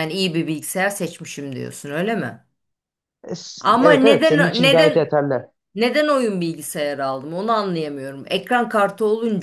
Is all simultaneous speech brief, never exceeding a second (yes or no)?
no